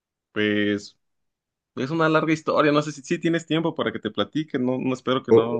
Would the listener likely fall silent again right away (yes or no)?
no